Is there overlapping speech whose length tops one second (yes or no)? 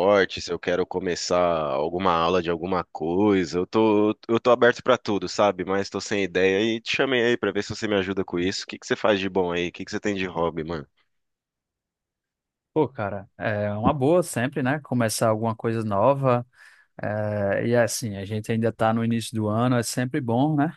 no